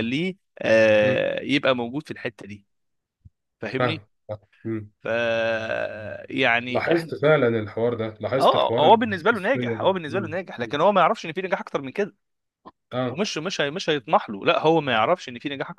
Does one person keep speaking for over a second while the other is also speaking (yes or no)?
yes